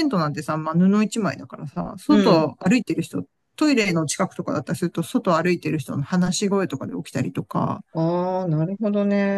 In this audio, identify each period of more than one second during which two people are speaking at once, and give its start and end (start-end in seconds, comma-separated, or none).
none